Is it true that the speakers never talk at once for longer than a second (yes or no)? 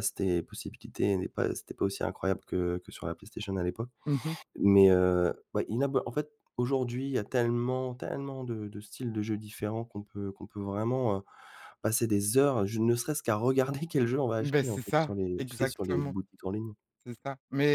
no